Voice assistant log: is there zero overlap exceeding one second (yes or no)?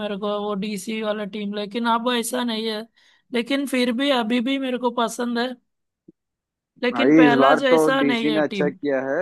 no